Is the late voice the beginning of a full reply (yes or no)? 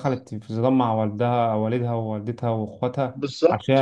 yes